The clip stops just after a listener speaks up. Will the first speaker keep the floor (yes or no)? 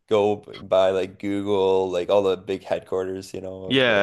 no